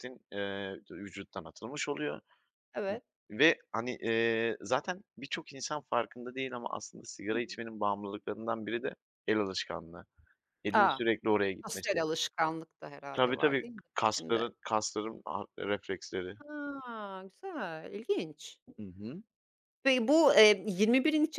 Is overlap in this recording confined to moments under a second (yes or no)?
no